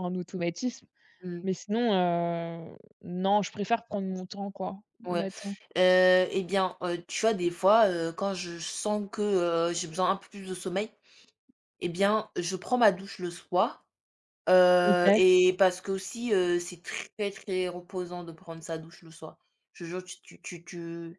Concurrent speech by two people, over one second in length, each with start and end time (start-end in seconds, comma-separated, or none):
none